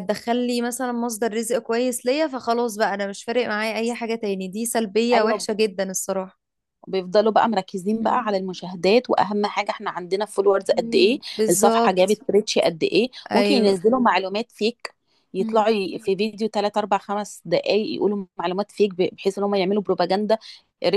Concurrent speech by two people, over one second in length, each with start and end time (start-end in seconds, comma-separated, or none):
10.7-12.2